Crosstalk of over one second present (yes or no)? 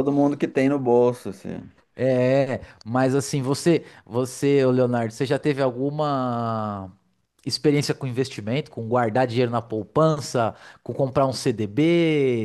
no